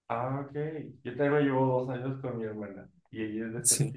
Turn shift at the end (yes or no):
no